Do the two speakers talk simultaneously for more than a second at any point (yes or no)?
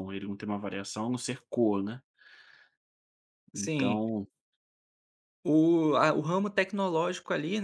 no